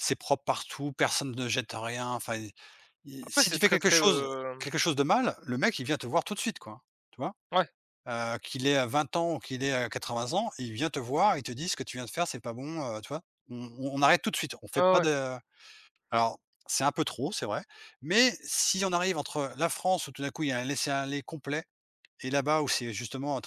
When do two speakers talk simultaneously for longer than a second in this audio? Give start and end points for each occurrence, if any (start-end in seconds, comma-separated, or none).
3.2-4.7